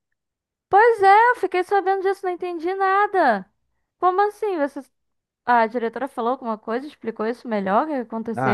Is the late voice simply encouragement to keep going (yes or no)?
no